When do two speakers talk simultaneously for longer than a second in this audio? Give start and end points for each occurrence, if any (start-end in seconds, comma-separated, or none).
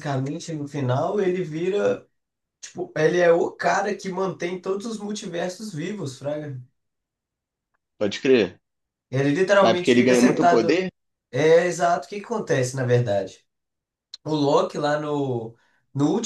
9.6-10.8